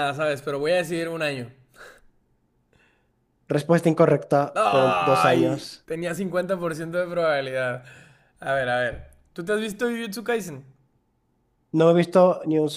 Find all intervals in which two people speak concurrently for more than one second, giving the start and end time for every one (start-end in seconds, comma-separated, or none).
4.5-5.8